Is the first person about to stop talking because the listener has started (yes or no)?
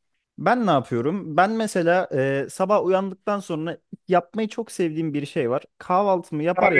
no